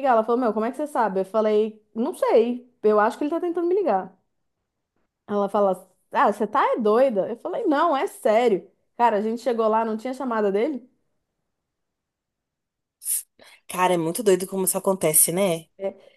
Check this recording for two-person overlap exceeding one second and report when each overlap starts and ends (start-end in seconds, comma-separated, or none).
none